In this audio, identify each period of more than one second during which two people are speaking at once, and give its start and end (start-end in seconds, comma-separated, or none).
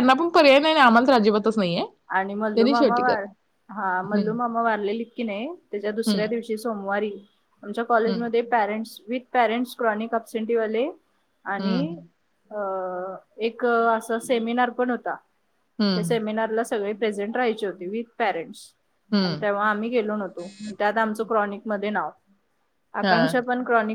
none